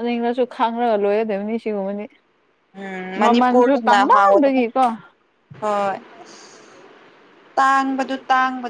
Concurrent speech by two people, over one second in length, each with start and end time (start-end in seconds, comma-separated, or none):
3.2-4.6